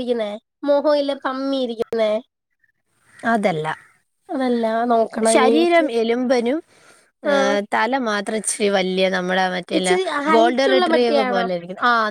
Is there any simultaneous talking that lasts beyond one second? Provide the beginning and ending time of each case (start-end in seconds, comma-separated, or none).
9.8-11.4